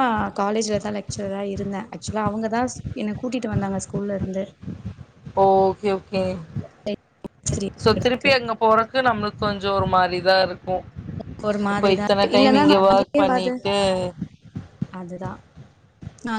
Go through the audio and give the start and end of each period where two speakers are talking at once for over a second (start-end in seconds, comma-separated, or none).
11.7-13.5